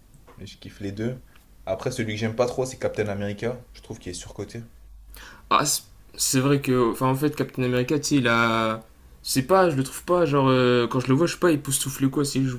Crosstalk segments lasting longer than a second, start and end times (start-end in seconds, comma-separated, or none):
none